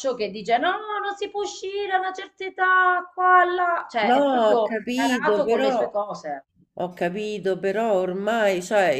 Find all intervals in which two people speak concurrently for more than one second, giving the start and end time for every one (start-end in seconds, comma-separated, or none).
4.1-5.7